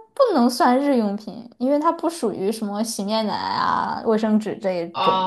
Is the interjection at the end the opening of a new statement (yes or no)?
yes